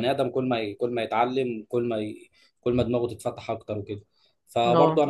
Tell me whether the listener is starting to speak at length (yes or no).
no